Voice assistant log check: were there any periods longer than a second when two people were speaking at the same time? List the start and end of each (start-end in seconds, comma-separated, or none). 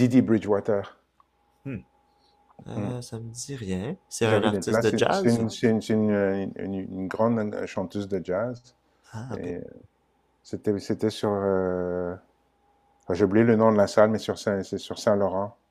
4.2-5.5